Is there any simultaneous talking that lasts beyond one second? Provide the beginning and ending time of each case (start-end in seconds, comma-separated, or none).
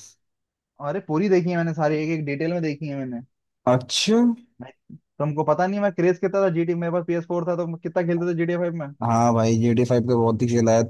none